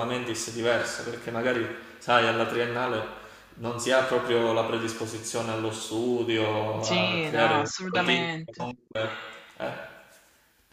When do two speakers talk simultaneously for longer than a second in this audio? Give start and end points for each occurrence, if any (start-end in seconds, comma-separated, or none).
6.8-8.7